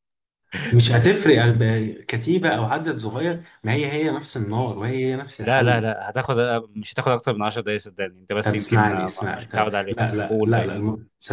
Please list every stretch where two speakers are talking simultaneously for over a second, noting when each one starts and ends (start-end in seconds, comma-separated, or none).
8.4-10.7